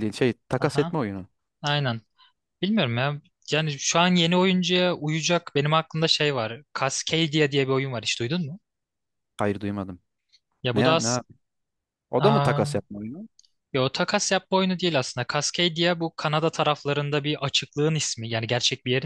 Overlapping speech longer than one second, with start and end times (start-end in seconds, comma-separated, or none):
none